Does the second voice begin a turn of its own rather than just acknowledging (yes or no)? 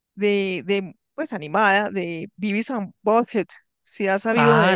yes